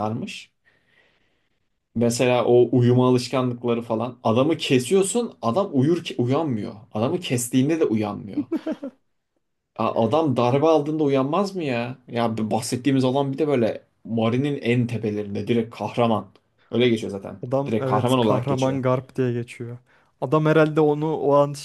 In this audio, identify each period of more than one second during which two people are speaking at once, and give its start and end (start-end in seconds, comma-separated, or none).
17.5-18.8